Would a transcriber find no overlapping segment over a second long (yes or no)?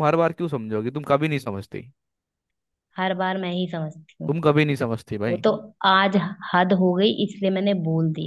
yes